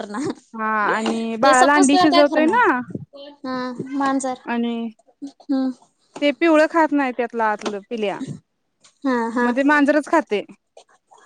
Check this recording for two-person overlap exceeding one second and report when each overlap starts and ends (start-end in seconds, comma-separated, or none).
0.6-2.6